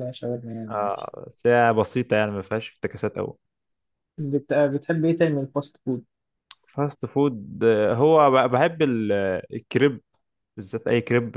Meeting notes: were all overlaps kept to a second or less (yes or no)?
yes